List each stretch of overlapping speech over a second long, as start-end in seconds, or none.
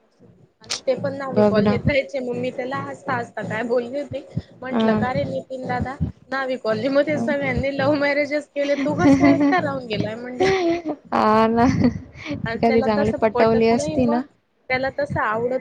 12.7-14.2